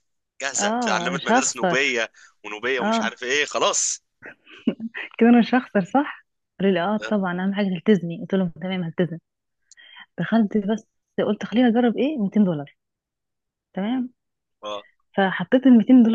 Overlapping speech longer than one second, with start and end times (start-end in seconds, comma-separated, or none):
0.6-2.0